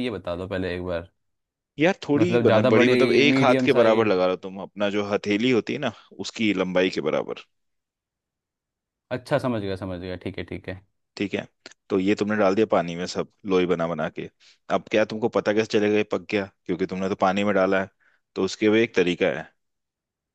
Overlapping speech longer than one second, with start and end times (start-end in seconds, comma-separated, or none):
2.2-4.2